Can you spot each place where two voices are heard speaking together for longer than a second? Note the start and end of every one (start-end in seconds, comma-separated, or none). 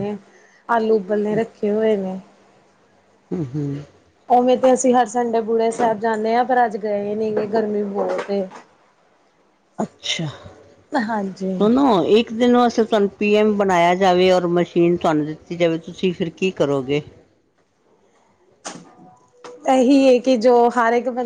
none